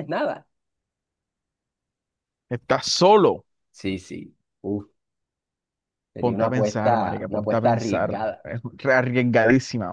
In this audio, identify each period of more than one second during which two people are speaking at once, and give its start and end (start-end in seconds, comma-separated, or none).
6.2-8.5